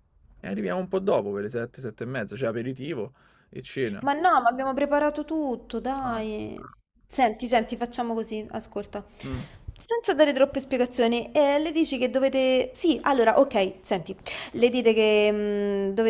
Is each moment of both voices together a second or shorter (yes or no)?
yes